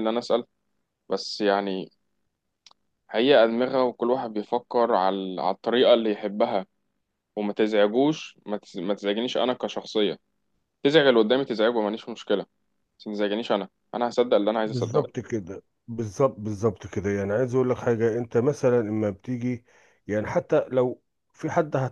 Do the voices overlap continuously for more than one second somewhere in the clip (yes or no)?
no